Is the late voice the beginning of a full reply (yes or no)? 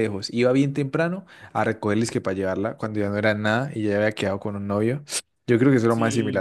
yes